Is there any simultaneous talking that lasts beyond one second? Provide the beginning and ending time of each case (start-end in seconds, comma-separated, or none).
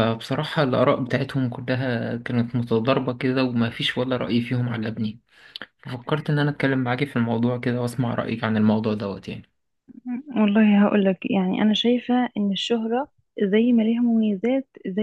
none